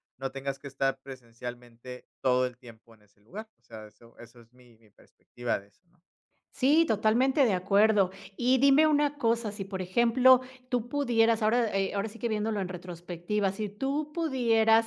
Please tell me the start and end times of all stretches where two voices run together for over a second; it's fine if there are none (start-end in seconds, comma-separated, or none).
none